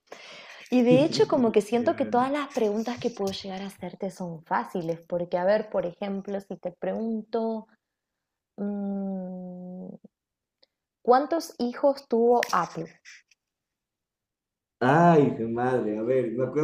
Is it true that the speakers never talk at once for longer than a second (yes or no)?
no